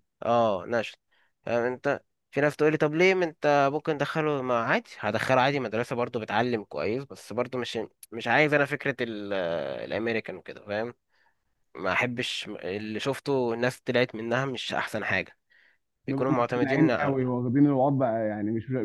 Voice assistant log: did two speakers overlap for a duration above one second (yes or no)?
yes